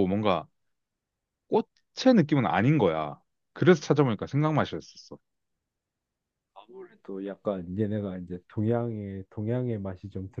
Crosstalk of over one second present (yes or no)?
no